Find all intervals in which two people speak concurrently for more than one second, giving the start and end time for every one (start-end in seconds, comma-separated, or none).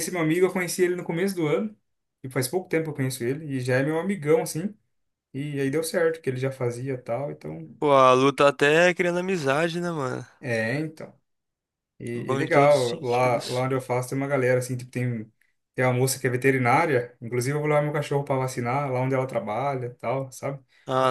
12.1-13.7